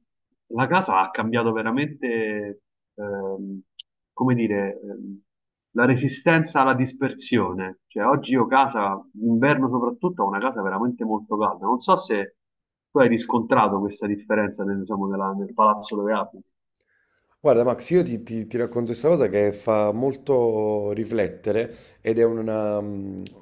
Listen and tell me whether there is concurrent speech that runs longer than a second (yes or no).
no